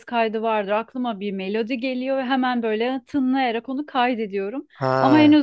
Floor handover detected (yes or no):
no